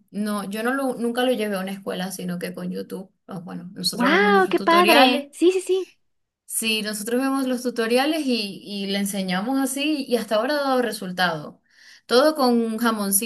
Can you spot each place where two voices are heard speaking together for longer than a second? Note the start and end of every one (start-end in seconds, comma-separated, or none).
3.9-5.3